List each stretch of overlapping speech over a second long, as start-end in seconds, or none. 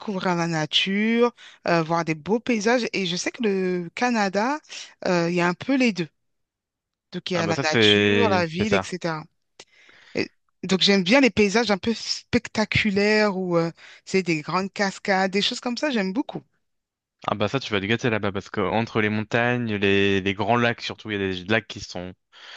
7.3-8.9